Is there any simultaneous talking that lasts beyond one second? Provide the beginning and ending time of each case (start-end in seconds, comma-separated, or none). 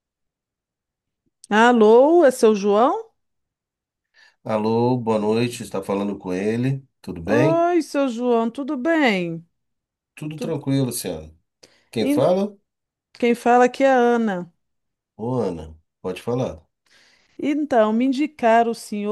none